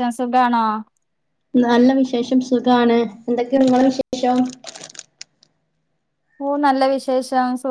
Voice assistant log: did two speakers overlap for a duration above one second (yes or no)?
no